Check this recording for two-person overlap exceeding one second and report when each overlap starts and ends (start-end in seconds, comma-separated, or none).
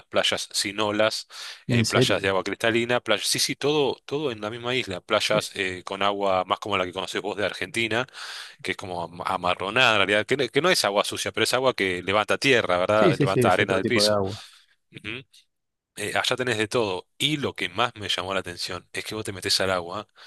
12.9-14.2